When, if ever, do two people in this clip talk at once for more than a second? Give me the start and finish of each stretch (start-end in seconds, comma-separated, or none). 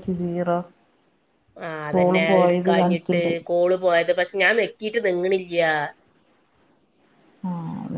1.9-3.3